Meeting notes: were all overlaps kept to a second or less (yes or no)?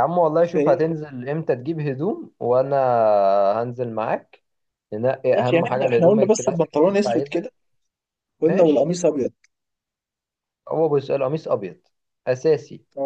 no